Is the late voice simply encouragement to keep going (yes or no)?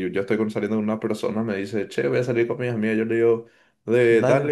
yes